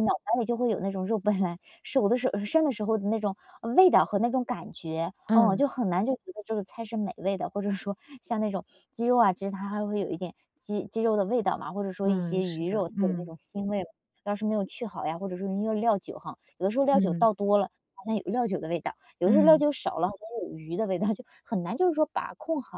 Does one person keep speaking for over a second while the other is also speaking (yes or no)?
yes